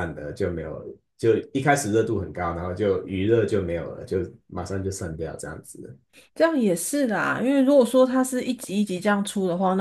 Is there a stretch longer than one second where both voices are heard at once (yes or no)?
no